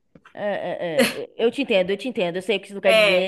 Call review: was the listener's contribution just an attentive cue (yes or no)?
yes